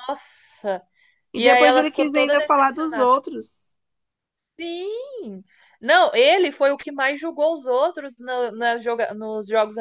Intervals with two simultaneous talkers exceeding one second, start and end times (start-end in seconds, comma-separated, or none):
1.3-3.1